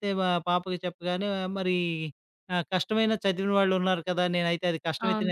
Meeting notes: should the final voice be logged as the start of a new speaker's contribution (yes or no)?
no